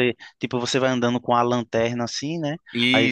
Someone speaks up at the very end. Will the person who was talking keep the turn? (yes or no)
yes